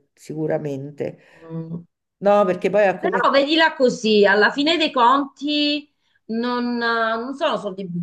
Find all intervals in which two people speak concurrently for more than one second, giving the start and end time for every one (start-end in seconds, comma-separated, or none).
none